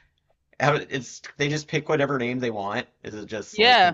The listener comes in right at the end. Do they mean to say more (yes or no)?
yes